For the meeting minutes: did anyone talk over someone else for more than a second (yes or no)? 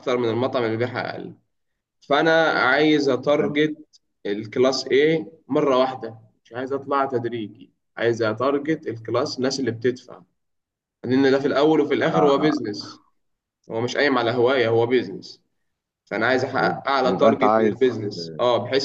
yes